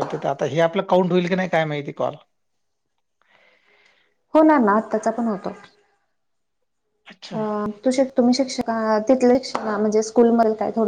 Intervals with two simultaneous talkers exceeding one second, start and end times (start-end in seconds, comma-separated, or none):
none